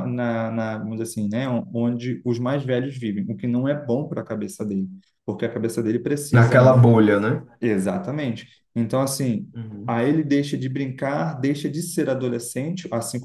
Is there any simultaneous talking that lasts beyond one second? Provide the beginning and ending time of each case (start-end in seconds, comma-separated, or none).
none